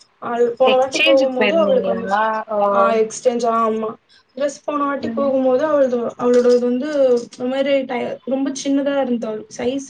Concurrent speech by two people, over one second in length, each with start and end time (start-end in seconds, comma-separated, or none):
0.7-2.6